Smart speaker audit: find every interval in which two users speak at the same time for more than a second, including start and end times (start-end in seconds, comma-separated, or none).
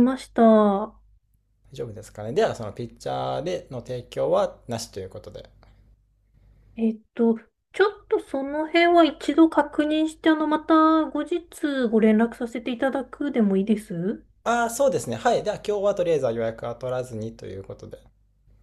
none